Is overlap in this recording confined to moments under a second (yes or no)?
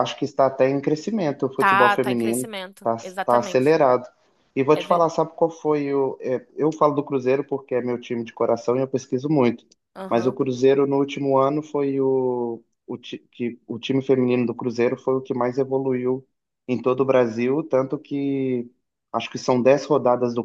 no